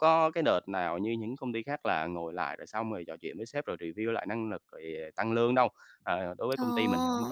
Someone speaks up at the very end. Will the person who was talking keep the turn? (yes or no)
yes